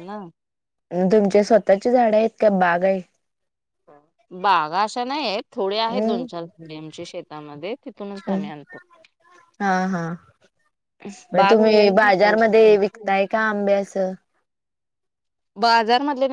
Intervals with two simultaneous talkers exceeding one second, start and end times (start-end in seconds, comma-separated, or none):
11.4-13.1